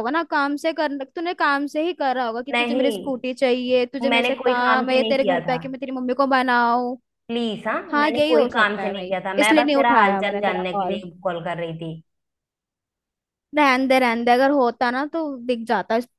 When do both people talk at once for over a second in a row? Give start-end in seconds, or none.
4.0-5.6, 7.9-11.0